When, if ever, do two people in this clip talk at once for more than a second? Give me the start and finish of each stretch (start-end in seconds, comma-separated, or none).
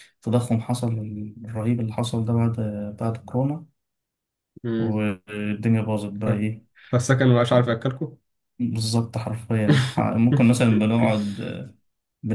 none